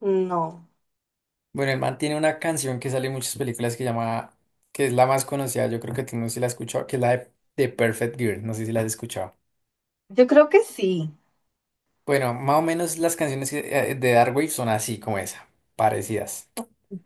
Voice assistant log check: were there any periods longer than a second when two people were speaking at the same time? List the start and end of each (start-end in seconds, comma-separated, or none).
none